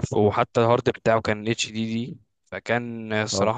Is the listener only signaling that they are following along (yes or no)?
yes